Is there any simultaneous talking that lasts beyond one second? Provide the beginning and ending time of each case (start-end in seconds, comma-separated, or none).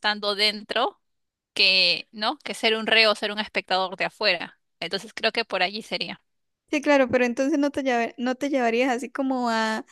none